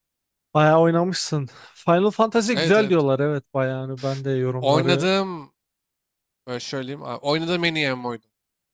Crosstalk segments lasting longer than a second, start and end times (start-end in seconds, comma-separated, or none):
none